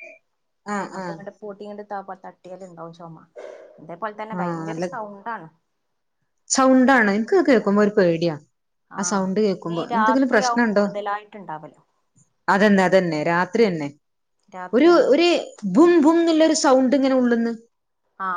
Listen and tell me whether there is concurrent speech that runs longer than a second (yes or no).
yes